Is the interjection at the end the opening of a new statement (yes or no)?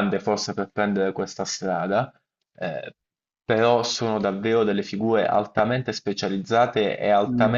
no